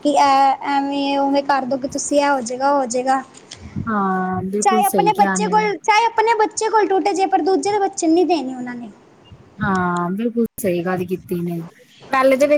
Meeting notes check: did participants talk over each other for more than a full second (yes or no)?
no